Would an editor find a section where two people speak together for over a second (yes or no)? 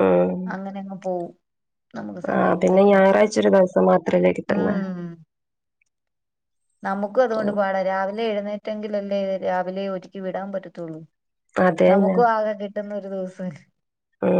no